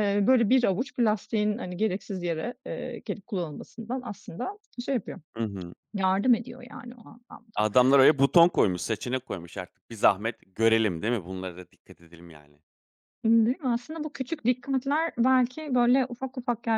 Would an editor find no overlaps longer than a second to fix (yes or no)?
yes